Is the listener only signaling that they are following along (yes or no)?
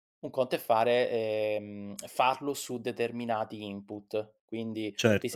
no